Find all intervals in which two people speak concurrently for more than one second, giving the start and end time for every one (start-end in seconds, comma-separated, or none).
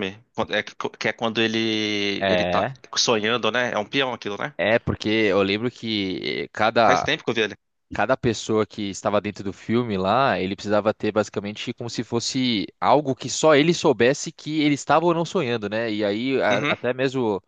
none